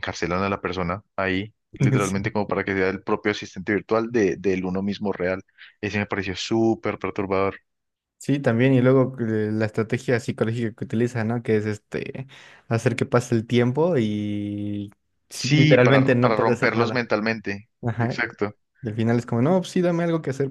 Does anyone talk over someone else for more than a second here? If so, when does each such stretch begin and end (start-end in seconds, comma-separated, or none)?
15.3-17.0